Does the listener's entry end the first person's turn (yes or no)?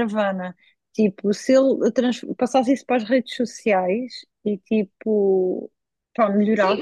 yes